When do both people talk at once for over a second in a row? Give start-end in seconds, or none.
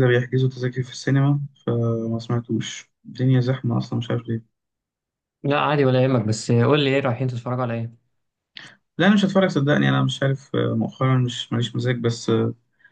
none